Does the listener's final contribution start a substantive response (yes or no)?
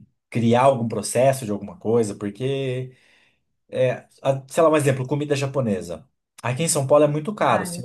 no